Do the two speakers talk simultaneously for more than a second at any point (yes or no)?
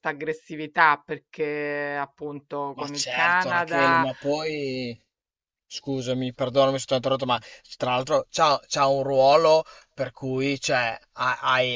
yes